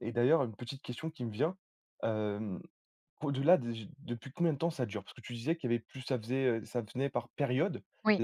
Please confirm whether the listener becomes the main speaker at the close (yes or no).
no